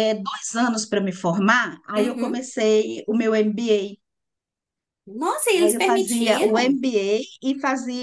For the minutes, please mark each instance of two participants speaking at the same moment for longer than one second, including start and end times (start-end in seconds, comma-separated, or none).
5.5-6.8